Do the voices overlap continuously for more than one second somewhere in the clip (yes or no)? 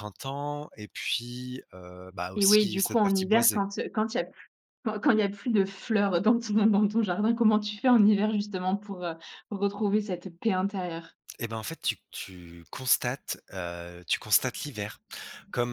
yes